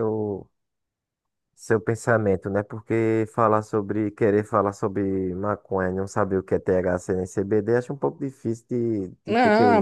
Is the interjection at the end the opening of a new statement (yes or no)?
yes